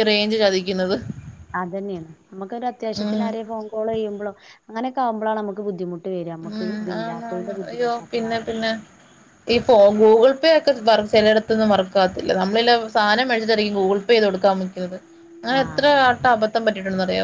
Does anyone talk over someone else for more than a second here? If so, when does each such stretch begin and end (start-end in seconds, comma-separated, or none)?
6.5-8.5